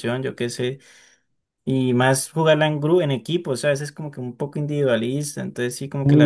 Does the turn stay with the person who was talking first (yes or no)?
no